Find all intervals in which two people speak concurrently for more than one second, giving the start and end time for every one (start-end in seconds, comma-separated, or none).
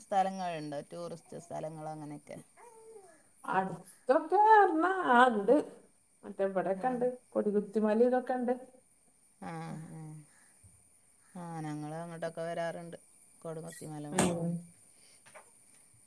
none